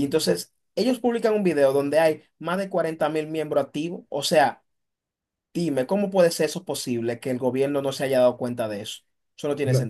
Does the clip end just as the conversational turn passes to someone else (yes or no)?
yes